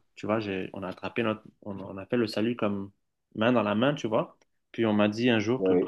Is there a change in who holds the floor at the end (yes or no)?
no